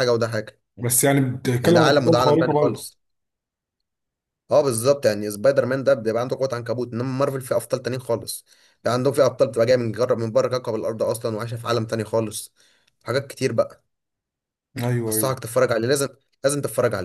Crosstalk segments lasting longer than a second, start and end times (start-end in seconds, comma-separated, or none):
1.6-2.9